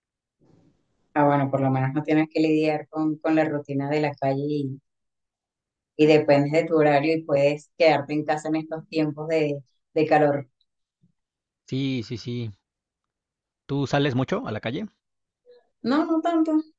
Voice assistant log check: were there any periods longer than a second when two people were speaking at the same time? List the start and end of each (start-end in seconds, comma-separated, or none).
none